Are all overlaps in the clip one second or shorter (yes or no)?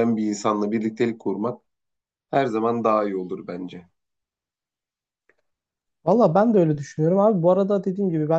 yes